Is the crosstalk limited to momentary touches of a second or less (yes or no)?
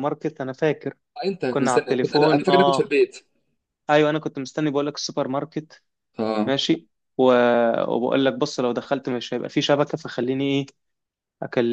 no